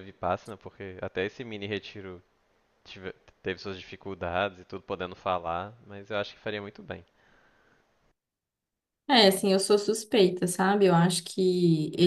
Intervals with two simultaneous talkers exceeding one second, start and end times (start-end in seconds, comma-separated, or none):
none